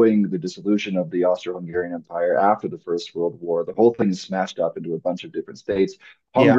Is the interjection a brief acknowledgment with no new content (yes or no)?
yes